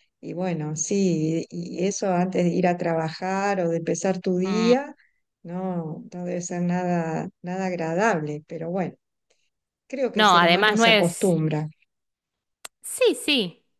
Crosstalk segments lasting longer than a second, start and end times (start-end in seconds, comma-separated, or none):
10.1-11.4